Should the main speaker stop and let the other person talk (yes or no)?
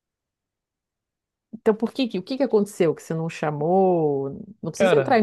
no